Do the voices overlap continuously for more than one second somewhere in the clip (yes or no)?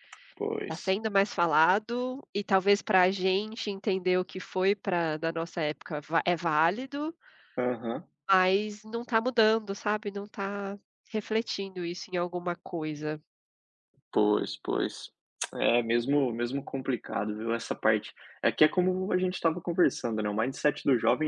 no